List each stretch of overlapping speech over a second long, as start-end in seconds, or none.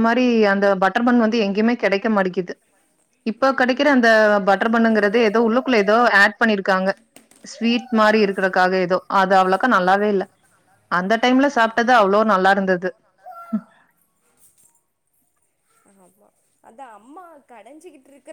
none